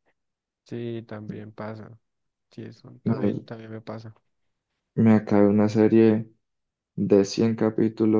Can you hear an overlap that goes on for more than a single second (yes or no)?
no